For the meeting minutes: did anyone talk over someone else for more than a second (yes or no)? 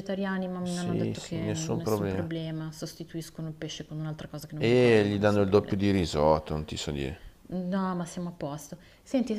yes